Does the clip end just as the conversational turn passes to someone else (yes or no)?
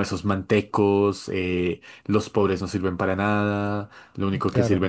no